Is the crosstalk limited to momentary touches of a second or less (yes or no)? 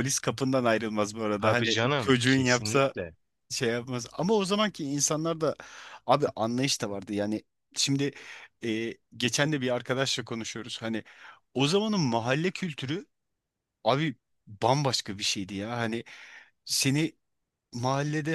no